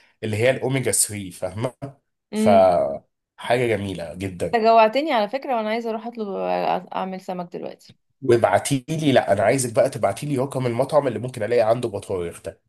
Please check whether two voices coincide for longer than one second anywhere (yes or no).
no